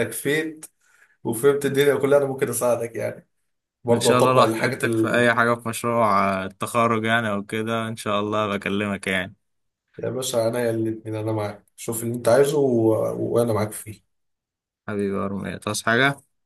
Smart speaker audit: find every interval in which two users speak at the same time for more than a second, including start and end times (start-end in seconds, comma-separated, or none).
3.9-5.3